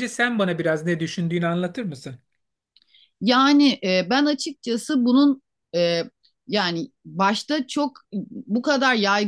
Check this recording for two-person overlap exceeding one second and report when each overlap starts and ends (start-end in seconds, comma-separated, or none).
none